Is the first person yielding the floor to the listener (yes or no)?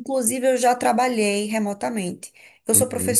no